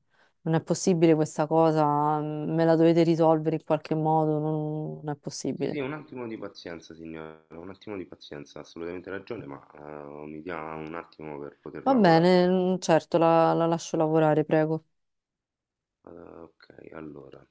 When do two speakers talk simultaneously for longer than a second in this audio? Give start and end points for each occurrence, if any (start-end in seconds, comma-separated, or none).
none